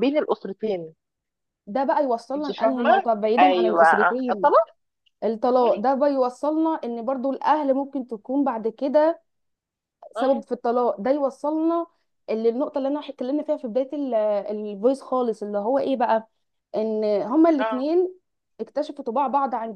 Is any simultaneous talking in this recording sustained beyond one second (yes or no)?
yes